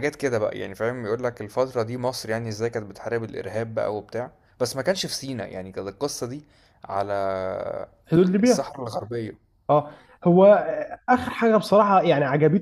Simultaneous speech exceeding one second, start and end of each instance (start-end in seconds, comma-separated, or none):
none